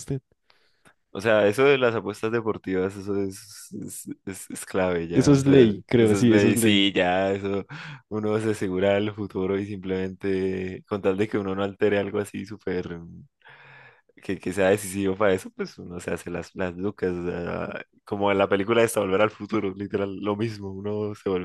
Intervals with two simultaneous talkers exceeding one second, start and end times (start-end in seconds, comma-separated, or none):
5.1-6.9